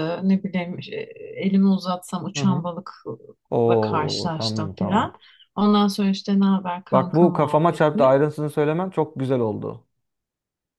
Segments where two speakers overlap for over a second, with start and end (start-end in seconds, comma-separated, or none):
3.5-5.2, 6.9-8.2